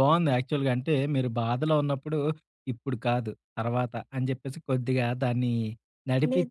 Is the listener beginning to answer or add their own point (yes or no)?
no